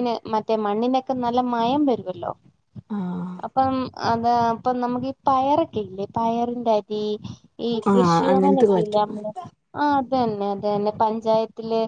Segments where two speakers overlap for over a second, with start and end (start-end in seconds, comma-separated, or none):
7.9-9.2